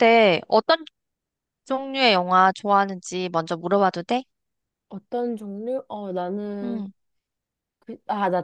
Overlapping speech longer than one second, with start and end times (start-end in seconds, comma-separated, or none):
none